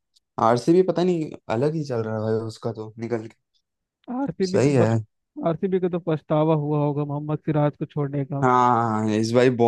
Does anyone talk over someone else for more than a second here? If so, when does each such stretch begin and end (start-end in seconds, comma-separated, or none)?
none